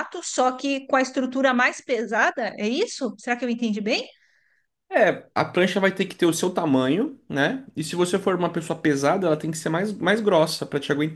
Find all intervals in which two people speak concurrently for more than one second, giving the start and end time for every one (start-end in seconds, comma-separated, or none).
none